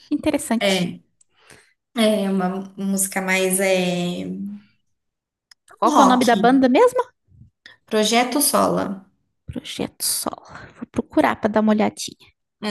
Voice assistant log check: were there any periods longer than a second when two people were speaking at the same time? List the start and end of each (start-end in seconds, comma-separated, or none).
none